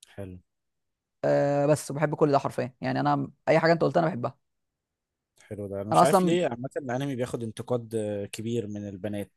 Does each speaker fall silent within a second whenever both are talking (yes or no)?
yes